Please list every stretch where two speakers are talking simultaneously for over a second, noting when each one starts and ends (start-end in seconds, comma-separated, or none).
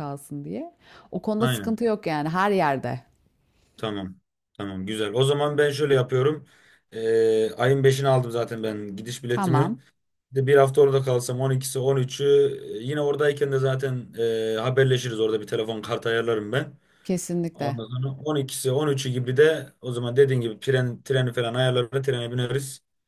none